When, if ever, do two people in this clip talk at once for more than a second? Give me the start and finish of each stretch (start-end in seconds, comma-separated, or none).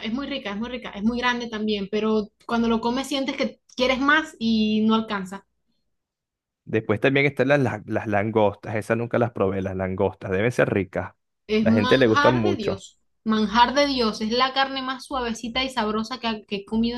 11.6-12.8